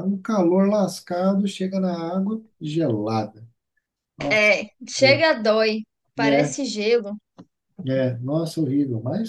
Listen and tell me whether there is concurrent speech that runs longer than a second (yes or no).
no